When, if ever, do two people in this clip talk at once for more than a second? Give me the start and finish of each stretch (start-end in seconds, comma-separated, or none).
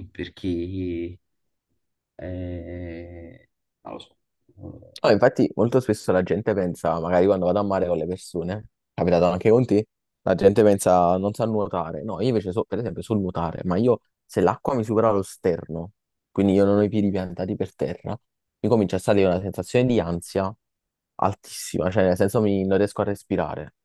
none